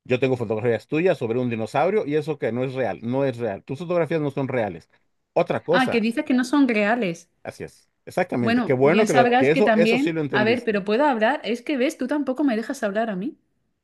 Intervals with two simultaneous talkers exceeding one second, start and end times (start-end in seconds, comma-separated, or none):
8.4-10.8